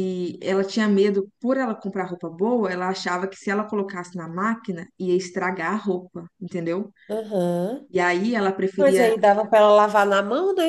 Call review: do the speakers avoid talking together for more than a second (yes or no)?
yes